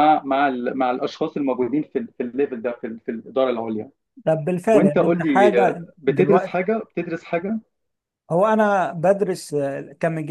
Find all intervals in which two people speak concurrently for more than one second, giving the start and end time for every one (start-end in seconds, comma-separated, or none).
4.7-6.6